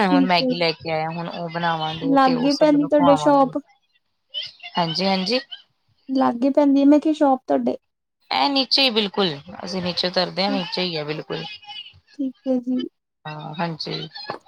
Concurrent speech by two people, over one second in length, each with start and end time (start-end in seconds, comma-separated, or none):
2.1-3.5